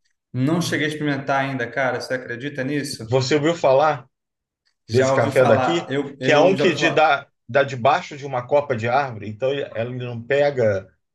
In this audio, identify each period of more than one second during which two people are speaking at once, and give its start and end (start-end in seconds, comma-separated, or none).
4.9-7.1